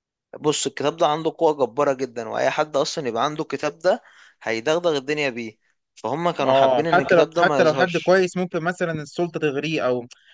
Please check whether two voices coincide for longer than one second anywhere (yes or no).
yes